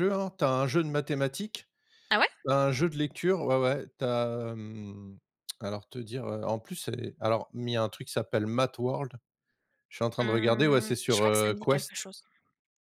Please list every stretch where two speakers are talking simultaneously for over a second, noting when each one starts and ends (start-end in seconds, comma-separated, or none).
10.2-12.1